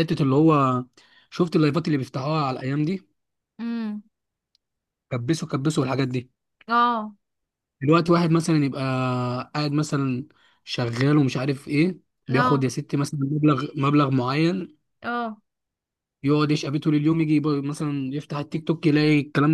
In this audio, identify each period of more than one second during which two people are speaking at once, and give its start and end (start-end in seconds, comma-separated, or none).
none